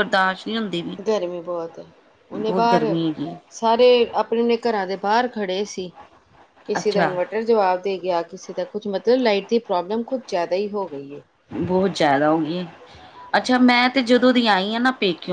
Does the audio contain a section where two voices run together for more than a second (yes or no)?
no